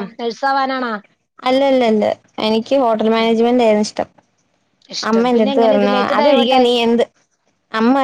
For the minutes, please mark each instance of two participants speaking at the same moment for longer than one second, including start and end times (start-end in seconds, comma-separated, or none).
5.1-6.7